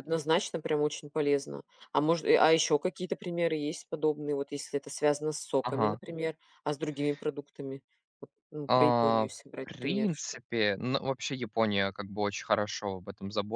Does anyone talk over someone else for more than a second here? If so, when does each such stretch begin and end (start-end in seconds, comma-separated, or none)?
8.7-10.4